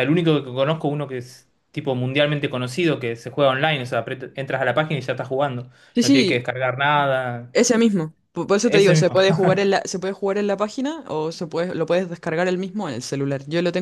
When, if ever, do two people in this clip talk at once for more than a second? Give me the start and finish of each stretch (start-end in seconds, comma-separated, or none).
none